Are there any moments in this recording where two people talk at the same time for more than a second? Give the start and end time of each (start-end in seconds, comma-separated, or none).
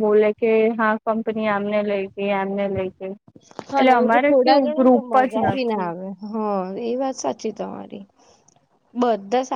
3.8-5.9